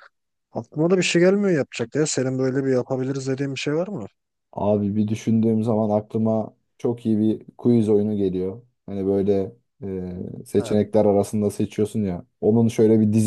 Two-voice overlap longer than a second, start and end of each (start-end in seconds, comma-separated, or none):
none